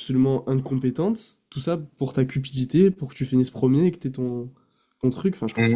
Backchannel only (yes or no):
no